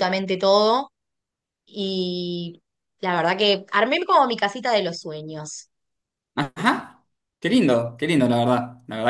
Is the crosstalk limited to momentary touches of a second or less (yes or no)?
yes